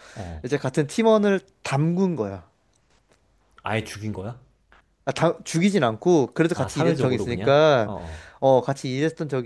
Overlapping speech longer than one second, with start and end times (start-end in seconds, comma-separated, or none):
6.5-7.9